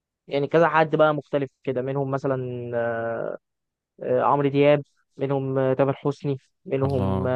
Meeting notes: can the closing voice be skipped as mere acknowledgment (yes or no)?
yes